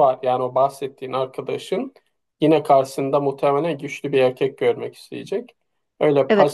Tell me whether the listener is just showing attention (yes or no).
yes